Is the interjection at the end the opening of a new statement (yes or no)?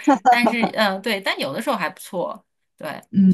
yes